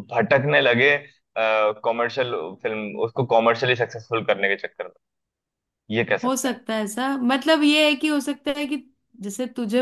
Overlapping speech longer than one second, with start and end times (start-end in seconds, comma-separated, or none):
none